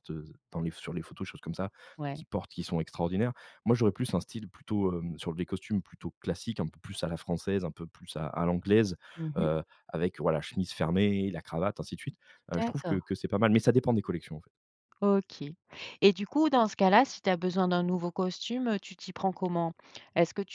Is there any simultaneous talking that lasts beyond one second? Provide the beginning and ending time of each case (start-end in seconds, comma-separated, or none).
none